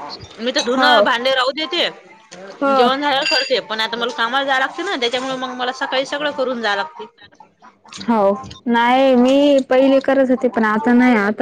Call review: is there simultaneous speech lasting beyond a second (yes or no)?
no